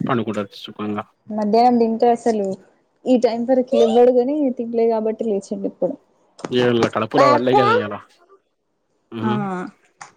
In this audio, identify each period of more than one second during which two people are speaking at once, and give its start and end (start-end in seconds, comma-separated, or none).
none